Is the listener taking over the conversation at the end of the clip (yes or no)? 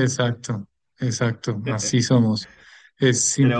no